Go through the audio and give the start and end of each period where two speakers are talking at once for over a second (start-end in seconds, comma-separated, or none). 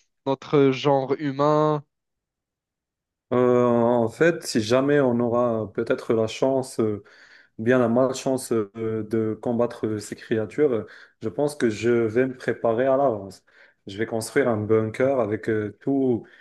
none